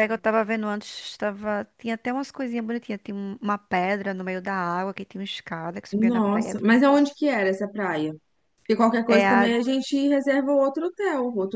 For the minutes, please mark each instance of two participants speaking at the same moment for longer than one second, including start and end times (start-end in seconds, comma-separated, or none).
5.9-7.2